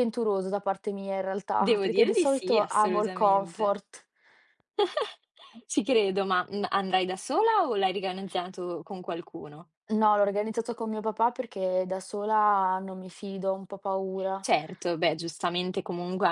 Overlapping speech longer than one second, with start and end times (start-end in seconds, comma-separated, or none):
1.6-3.8